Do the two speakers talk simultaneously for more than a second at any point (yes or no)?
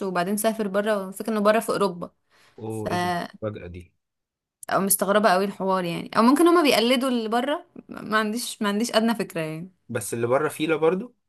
no